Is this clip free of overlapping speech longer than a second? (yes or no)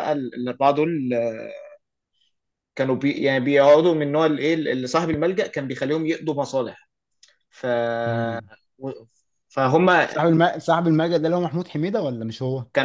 yes